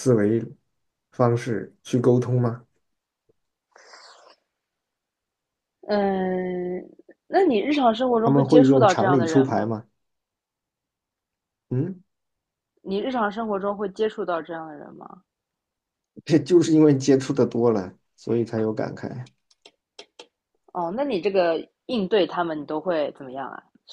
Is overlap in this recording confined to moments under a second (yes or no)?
no